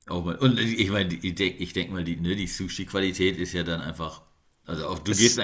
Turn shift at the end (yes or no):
no